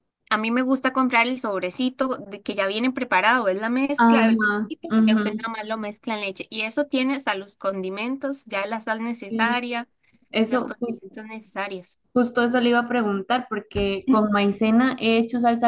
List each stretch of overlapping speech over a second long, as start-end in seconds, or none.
4.0-5.5